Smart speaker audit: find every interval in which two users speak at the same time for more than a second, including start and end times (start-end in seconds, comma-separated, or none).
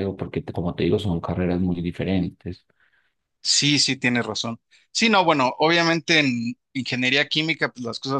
none